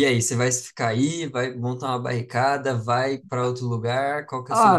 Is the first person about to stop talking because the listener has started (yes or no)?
yes